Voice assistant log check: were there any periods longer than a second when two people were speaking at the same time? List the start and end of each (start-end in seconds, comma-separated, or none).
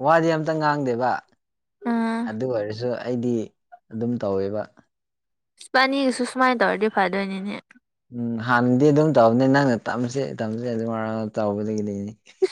none